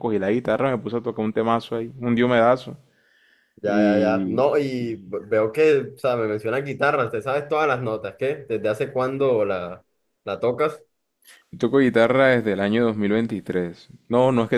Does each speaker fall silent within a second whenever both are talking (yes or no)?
no